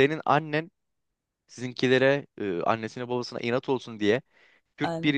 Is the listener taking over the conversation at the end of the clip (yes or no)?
no